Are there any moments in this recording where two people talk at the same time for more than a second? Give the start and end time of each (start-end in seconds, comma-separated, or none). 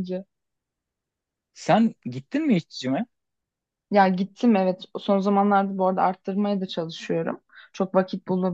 none